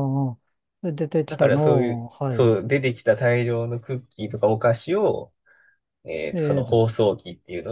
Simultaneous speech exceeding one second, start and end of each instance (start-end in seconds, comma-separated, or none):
1.3-2.6